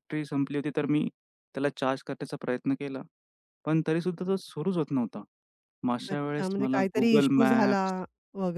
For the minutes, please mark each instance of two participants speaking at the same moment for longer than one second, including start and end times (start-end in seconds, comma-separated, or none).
6.1-7.8